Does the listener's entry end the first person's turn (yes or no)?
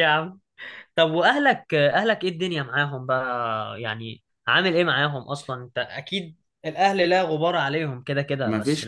yes